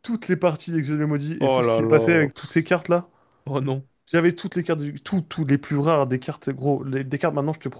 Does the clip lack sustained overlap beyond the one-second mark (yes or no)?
no